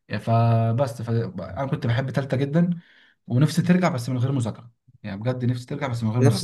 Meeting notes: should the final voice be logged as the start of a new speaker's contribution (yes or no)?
yes